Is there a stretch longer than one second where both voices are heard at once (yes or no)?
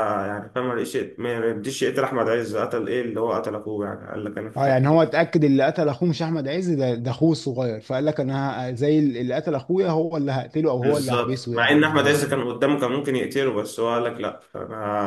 yes